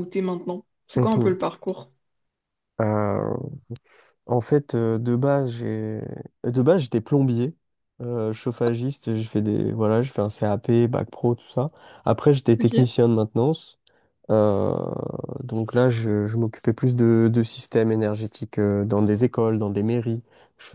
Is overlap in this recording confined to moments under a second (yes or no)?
yes